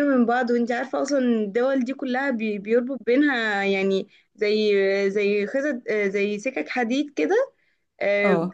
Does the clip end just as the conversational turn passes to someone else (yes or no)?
no